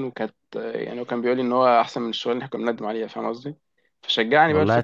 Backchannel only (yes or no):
yes